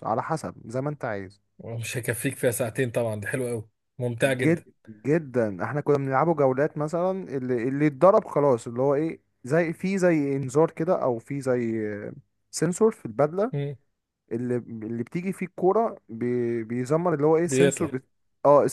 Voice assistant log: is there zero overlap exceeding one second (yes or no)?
yes